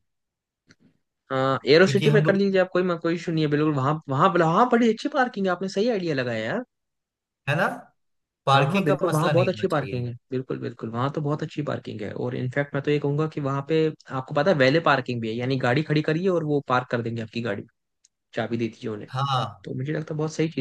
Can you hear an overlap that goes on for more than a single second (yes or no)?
yes